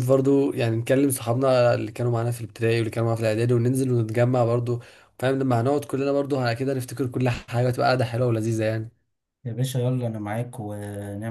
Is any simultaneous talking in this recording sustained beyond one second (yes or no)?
no